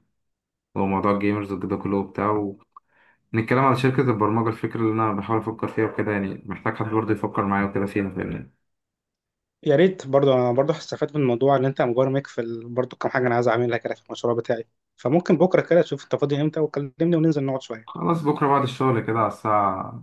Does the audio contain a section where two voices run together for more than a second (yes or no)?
no